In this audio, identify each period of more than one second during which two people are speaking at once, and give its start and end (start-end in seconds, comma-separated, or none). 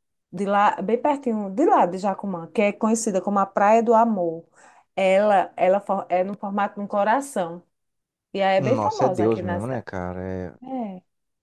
8.6-9.8